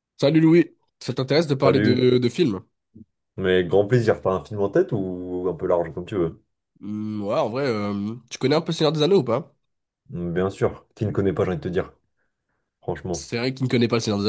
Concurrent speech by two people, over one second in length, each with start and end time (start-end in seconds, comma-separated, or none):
none